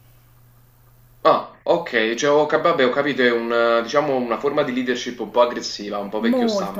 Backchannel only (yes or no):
no